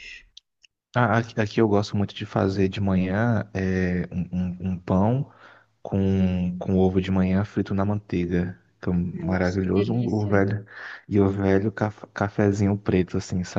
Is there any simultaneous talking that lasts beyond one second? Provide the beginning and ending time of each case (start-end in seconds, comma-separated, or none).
9.1-10.4